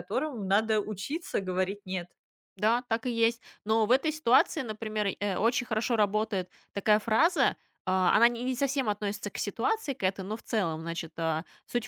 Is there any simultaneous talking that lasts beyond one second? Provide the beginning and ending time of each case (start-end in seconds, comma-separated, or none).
none